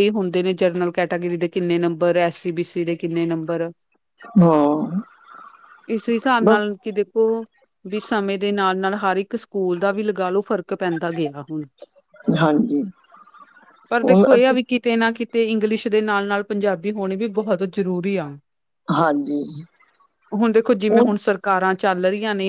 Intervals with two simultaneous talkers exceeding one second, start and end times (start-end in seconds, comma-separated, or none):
none